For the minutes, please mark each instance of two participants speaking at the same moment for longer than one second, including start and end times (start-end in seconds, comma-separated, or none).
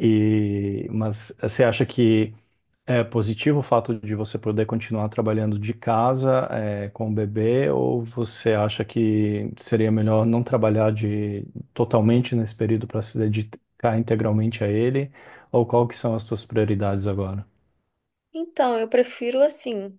none